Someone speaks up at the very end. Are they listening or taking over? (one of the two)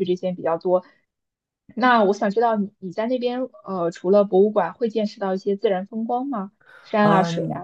taking over